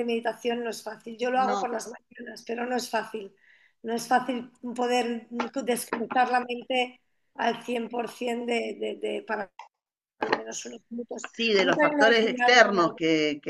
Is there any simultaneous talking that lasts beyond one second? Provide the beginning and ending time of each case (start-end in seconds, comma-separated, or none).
11.3-12.8